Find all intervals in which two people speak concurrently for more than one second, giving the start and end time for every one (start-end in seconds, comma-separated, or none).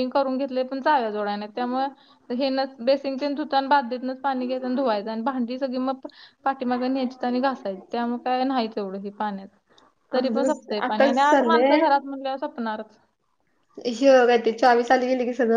10.2-11.8